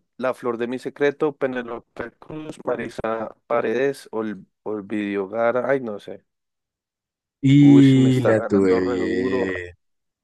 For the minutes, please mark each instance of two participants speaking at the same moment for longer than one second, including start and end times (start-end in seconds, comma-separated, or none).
7.6-9.5